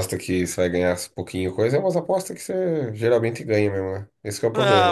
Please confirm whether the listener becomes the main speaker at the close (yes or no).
yes